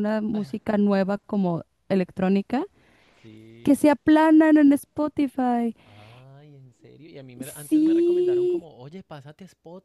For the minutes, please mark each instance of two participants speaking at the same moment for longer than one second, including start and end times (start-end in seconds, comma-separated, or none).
7.4-8.7